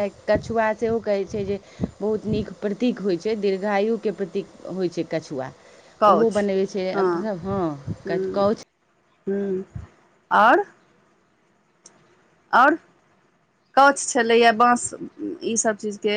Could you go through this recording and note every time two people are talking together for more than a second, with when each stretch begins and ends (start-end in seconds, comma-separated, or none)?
none